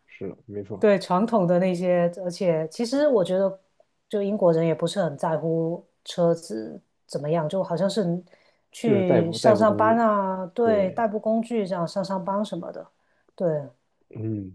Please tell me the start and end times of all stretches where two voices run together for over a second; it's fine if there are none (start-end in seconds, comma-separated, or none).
8.8-10.0